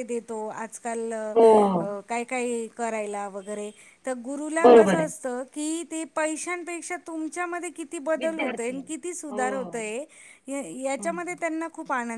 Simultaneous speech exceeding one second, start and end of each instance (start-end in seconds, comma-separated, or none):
8.2-9.6